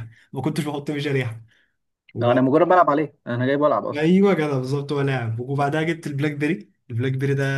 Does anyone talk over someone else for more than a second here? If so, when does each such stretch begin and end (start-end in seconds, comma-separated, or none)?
none